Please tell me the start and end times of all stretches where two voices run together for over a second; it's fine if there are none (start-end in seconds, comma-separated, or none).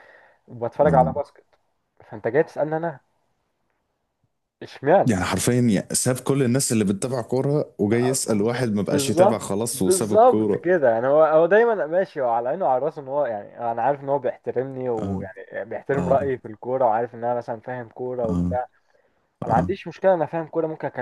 8.9-10.7